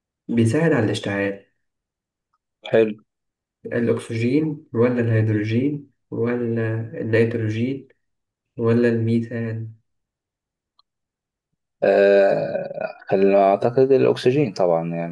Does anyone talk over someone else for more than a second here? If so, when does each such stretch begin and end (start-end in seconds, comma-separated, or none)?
none